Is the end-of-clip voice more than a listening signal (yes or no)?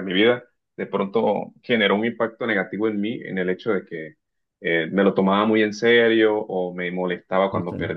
no